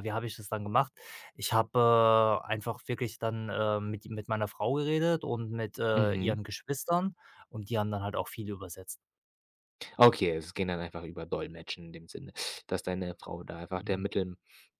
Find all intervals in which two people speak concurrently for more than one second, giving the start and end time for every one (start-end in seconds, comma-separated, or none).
none